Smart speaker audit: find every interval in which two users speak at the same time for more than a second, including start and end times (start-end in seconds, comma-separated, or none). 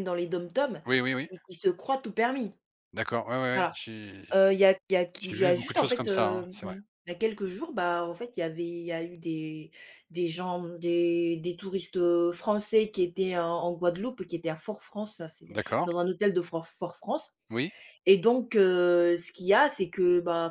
5.2-6.8